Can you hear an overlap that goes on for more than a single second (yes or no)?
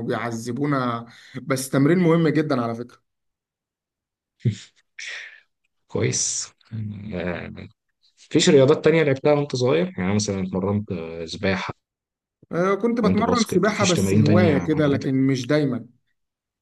yes